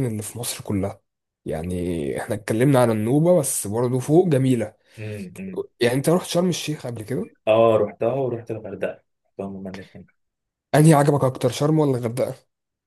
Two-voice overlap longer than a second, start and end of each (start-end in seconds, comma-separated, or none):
none